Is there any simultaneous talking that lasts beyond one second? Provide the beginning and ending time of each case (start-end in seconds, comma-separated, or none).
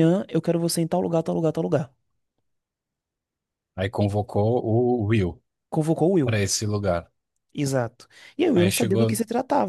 none